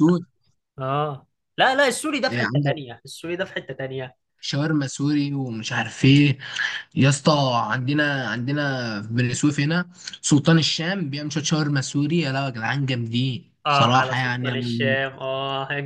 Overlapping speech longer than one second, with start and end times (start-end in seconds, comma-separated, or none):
13.7-15.0